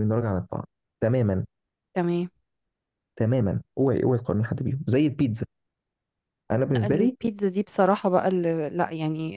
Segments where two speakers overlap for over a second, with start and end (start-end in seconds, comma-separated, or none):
none